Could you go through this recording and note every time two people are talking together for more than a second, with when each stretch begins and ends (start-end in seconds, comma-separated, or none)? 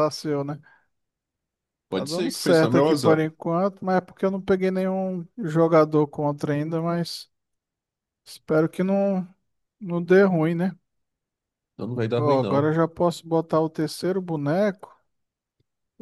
1.9-3.2